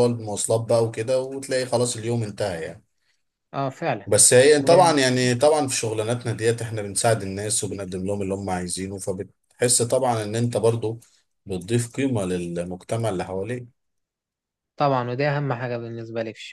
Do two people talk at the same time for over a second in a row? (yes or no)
no